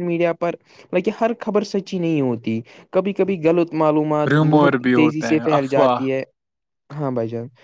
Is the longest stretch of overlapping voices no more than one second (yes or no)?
no